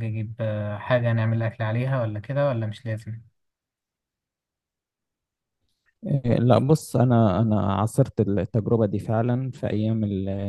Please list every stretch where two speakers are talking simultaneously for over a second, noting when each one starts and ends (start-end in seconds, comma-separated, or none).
none